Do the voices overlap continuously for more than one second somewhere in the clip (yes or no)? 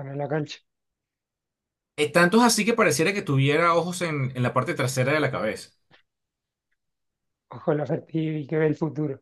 no